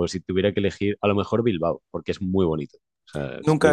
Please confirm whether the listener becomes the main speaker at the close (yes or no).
yes